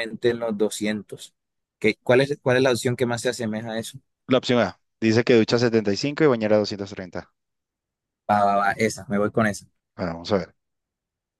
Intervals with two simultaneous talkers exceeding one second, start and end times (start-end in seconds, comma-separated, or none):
none